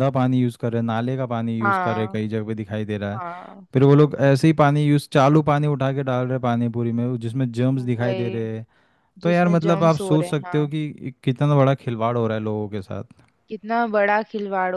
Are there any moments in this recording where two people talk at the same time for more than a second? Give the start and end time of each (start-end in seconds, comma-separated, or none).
9.2-10.7